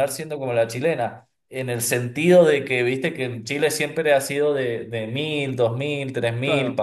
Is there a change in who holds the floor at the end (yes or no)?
no